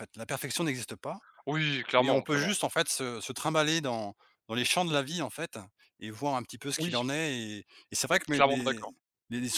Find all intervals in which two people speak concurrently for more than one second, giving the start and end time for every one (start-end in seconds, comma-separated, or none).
none